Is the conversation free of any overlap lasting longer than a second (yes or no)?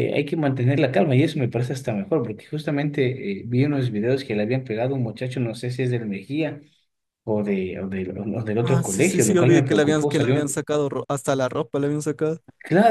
no